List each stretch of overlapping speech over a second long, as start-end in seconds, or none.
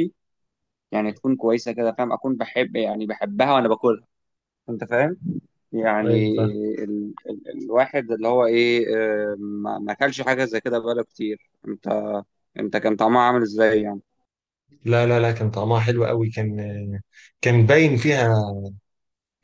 none